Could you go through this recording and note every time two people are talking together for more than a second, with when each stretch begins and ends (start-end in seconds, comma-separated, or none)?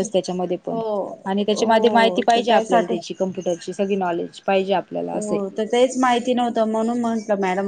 1.6-3.0